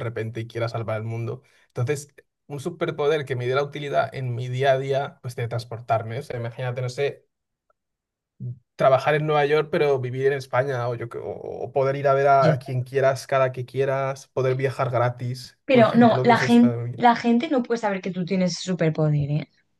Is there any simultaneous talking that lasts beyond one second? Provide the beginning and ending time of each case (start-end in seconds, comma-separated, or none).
15.6-17.1